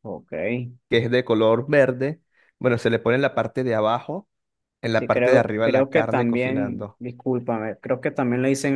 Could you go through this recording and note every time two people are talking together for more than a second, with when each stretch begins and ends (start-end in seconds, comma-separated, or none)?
4.9-7.0